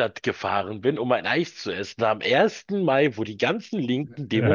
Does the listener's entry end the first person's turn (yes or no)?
no